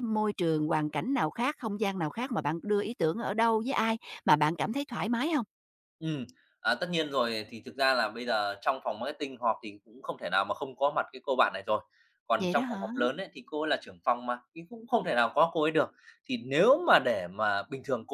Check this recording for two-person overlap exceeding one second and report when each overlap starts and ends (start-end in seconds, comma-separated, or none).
none